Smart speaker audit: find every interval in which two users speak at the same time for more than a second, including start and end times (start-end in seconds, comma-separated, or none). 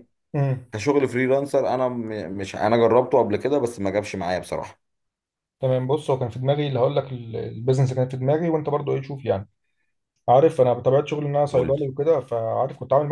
none